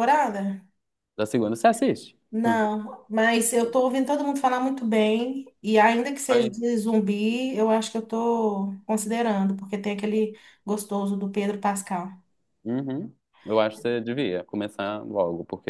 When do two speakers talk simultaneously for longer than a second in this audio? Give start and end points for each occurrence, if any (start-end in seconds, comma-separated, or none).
none